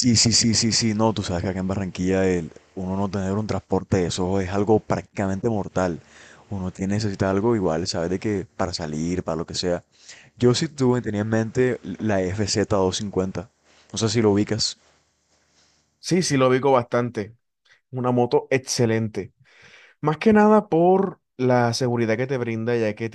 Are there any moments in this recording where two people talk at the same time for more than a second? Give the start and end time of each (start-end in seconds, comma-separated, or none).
none